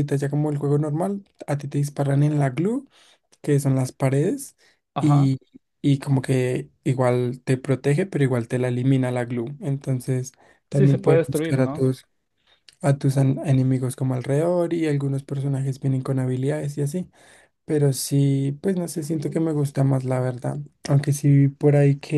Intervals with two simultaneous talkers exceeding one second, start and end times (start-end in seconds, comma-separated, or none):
10.7-11.9